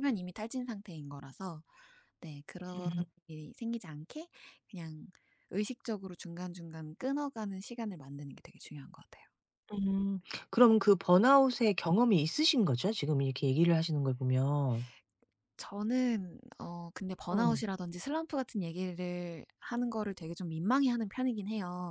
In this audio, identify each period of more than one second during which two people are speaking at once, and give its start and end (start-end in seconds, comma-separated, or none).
none